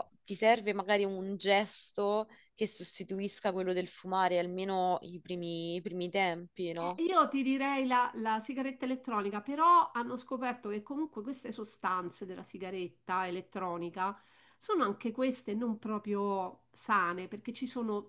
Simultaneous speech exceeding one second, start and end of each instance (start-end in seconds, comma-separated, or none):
none